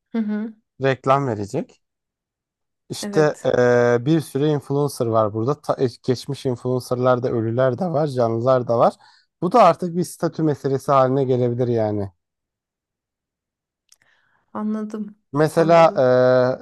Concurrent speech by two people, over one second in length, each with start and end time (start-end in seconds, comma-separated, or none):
none